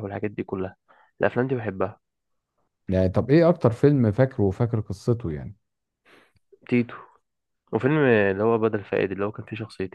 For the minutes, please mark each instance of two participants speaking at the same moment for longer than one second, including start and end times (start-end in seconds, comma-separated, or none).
none